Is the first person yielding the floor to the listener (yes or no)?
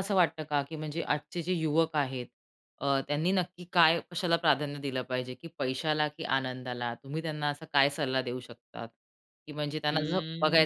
no